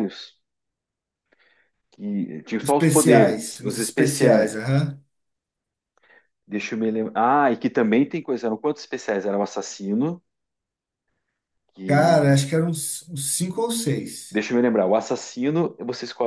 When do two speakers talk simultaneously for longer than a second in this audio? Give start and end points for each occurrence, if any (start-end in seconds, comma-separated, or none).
2.6-4.5